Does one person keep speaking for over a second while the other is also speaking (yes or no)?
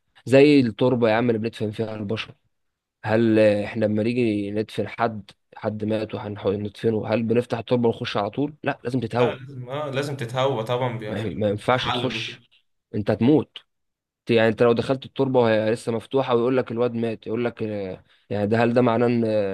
yes